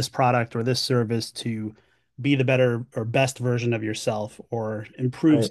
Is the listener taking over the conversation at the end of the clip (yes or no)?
no